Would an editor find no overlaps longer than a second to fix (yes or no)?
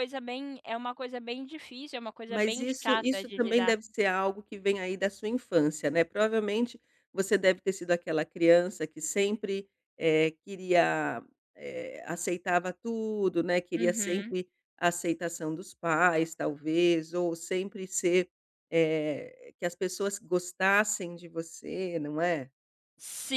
no